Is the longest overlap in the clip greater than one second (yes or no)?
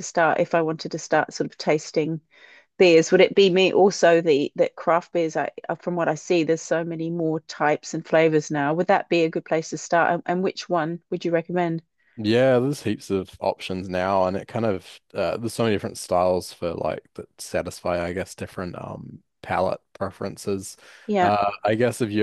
no